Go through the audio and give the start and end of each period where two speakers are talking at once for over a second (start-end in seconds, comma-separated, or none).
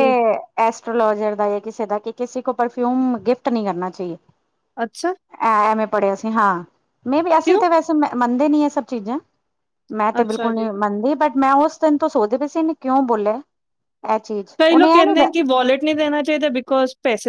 none